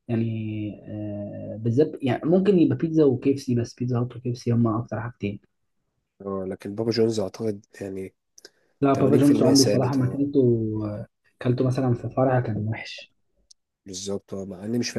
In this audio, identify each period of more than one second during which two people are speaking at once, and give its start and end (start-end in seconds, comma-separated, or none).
9.0-10.2